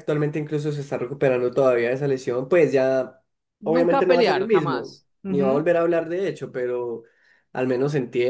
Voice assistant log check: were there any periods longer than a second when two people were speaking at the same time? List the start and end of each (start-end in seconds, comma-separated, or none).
3.6-5.7